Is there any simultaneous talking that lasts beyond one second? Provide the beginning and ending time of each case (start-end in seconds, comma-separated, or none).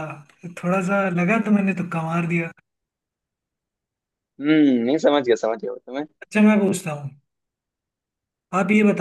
none